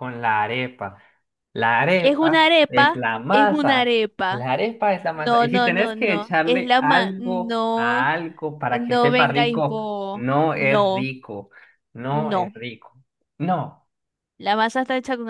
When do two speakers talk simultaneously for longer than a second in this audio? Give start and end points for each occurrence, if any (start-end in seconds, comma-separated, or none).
1.9-4.5, 5.1-8.1, 8.8-11.1